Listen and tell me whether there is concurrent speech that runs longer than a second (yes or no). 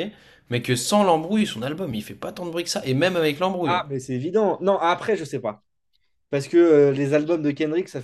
no